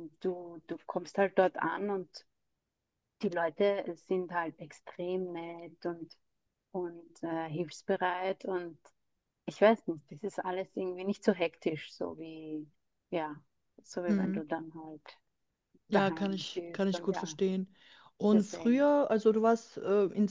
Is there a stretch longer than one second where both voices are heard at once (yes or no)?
yes